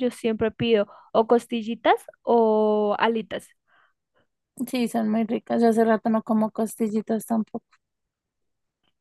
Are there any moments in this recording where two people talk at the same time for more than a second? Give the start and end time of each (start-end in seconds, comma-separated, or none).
none